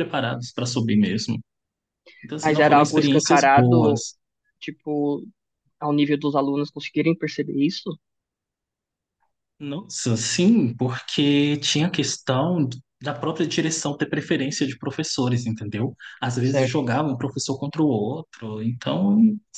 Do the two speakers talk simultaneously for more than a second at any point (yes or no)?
yes